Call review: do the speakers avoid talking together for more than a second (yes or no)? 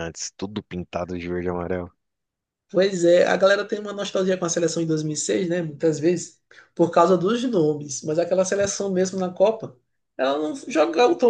yes